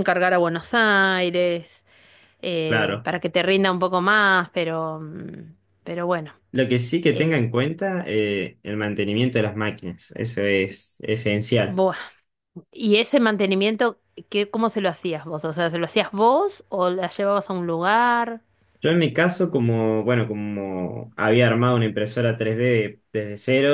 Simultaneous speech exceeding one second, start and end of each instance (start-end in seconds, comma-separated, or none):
none